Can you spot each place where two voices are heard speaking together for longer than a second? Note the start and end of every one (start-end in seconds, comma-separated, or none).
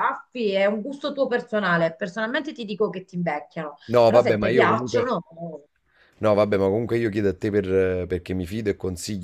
3.9-5.2